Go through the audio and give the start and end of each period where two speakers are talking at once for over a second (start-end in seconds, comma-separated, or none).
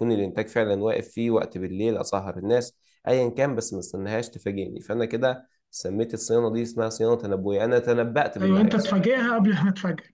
none